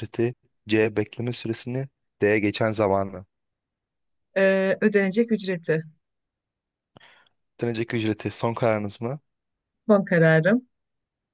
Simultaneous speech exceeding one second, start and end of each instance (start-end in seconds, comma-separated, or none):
none